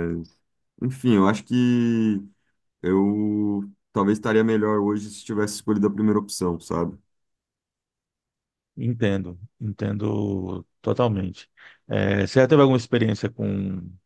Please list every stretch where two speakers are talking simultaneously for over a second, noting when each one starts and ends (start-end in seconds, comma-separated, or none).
none